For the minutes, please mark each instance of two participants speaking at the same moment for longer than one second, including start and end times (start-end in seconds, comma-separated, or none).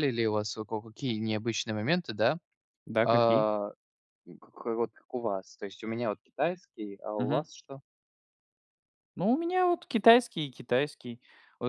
none